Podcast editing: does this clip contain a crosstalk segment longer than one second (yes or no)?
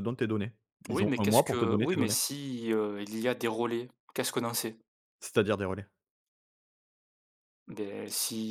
yes